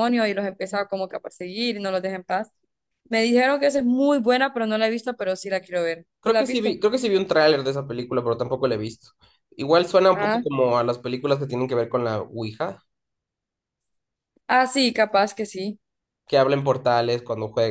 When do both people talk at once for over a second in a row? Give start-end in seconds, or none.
none